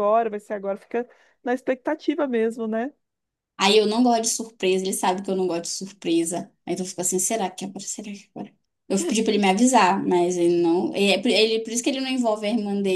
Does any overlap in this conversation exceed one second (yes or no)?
no